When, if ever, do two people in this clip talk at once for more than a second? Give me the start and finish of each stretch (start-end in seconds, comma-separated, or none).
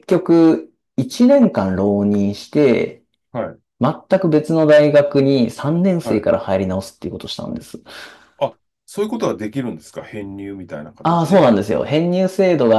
none